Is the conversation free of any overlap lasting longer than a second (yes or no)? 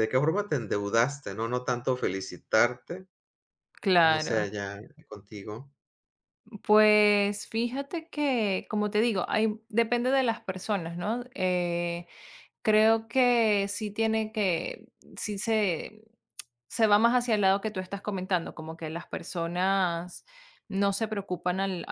yes